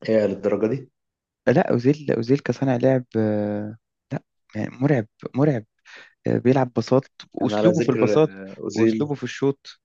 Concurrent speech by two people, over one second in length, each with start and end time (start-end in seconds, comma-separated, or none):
7.4-9.1